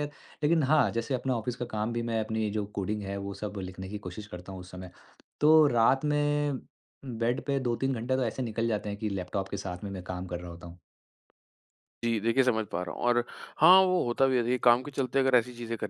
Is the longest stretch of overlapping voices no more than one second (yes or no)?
yes